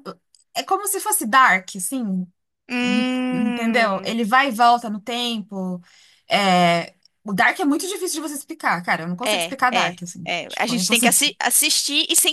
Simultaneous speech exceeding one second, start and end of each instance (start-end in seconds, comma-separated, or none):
2.8-4.1, 9.2-11.2